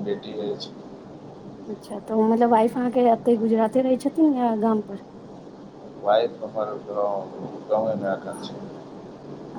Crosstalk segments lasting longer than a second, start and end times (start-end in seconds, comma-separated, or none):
none